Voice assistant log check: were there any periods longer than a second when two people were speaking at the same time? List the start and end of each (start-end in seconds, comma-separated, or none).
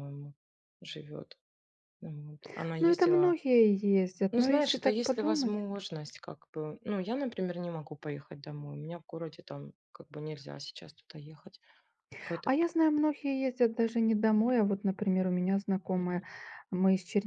4.3-5.6